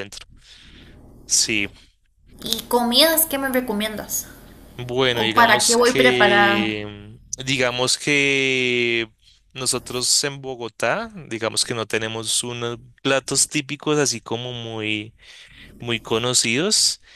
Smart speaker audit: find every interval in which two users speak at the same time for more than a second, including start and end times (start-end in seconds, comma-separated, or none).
5.1-6.8